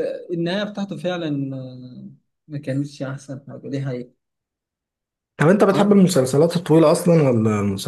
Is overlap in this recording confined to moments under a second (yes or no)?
yes